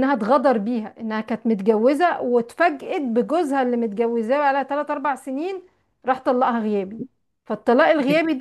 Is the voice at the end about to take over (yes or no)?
no